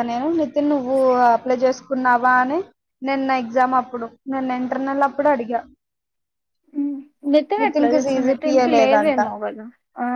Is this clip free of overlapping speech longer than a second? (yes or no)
no